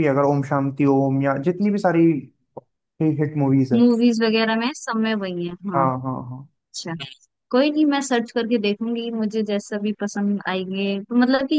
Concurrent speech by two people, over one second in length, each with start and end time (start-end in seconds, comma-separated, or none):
none